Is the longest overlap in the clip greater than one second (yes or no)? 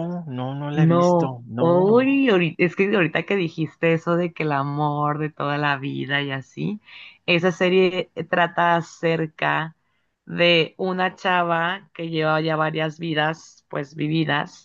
yes